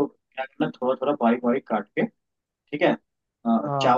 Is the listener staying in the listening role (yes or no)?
yes